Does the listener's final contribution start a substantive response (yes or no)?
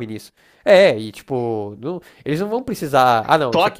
no